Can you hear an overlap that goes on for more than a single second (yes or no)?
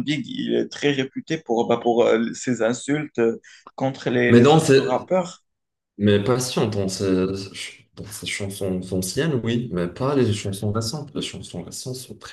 no